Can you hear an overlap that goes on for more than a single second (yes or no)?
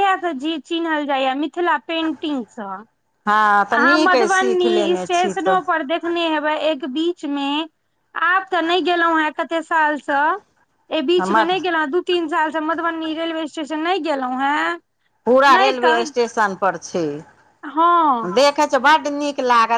yes